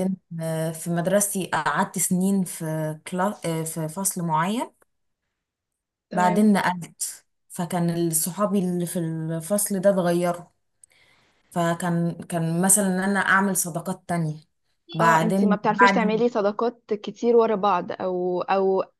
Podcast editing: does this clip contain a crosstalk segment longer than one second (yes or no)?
yes